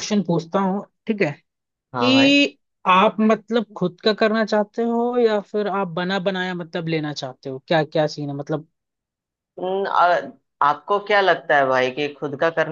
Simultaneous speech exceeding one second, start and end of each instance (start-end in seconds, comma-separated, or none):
none